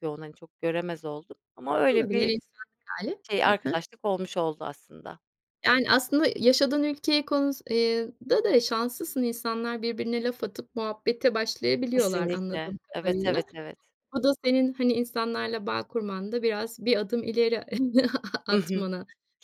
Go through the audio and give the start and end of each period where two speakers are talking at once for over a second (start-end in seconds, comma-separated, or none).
11.9-13.5